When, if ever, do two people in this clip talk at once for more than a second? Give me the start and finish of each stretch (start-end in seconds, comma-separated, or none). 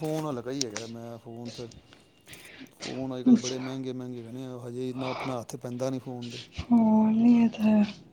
none